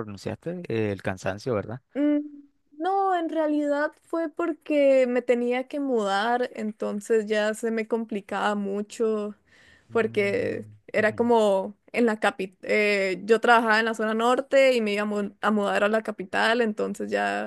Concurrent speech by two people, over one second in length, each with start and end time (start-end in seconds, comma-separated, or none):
9.9-11.3